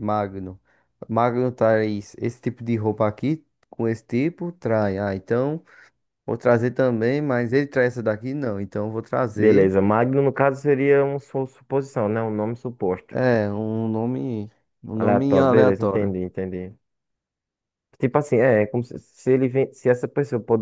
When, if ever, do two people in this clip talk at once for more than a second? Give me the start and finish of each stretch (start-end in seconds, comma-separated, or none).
14.9-16.1